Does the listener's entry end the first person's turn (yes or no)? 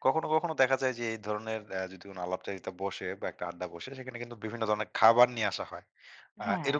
no